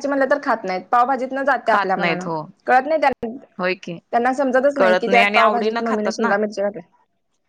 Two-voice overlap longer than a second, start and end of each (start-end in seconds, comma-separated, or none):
4.8-6.3